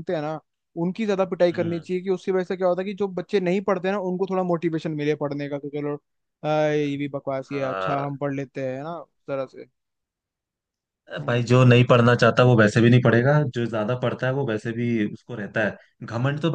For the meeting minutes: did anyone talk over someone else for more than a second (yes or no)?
no